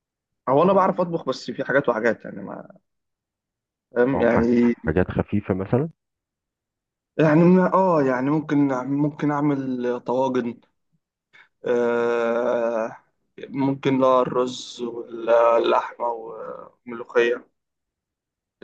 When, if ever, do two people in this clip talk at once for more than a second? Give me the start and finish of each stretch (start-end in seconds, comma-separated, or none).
none